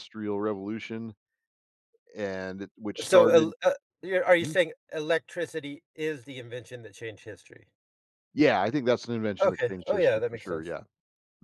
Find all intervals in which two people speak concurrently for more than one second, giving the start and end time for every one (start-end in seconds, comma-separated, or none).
9.4-10.7